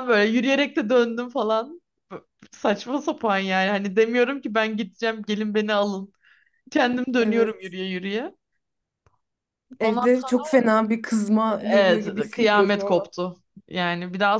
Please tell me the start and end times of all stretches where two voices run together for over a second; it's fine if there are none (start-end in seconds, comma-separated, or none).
11.6-13.1